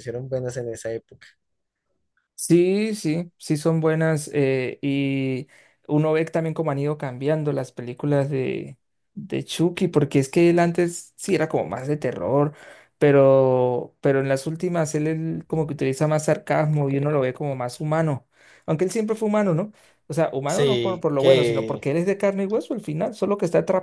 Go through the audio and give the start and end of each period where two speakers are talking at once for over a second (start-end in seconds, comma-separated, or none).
20.5-21.9